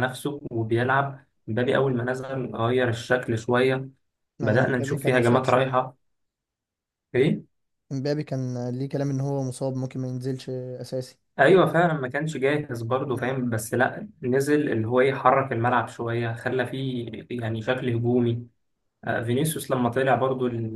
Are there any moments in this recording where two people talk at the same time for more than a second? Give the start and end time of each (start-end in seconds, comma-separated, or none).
4.4-5.8